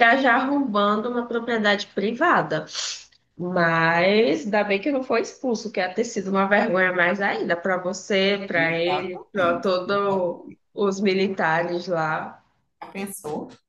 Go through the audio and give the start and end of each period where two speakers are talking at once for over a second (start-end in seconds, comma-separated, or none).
8.5-10.6